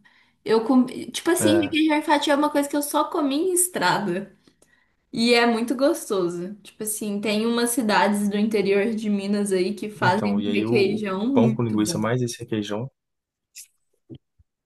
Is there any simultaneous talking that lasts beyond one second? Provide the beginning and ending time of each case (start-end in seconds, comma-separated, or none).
10.0-12.0